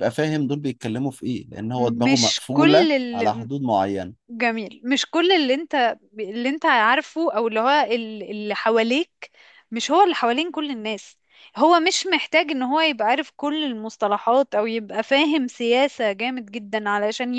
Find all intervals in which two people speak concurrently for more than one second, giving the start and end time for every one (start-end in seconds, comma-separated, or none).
2.0-3.5